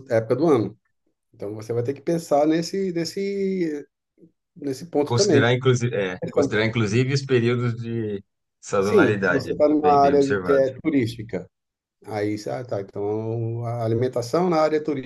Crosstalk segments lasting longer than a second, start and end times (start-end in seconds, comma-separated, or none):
8.8-10.7